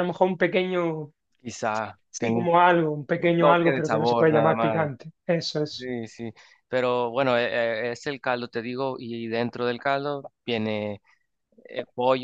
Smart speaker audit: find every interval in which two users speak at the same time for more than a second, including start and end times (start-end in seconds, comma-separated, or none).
3.2-4.9